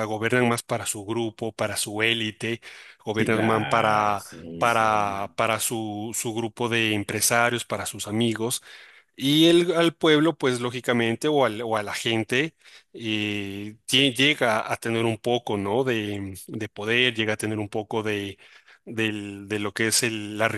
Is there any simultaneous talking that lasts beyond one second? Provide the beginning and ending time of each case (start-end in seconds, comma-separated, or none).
3.1-5.3